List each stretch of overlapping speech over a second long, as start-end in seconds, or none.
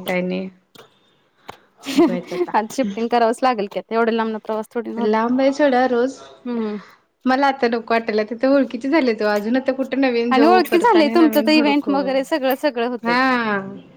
10.3-11.9